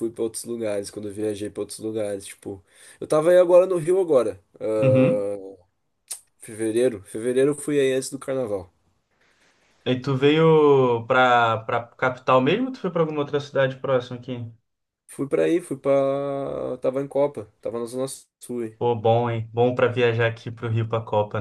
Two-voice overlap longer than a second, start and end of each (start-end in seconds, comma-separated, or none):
none